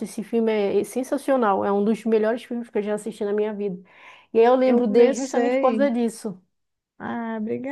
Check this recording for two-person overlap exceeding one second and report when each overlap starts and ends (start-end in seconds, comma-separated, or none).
4.6-5.9